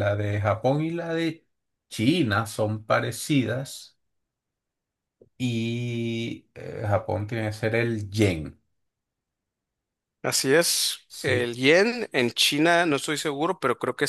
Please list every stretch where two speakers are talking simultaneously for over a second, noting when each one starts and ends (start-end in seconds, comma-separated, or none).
none